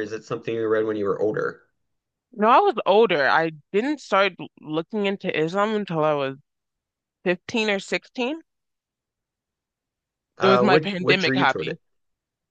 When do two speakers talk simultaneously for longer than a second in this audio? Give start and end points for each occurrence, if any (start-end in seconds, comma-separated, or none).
10.4-11.8